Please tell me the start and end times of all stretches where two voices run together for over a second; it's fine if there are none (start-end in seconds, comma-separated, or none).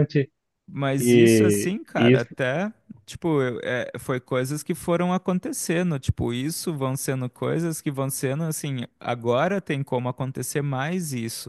1.0-2.3